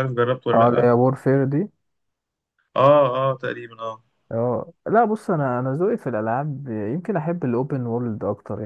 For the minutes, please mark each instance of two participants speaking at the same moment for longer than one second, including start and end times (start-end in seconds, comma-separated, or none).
none